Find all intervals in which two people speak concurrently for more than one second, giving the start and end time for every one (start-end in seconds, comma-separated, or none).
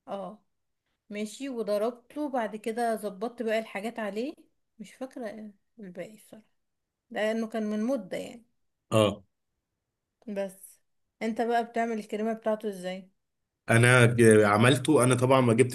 none